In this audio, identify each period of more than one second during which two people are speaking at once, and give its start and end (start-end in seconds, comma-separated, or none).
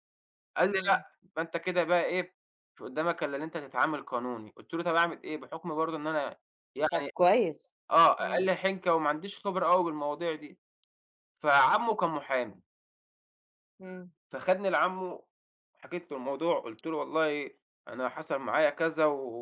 none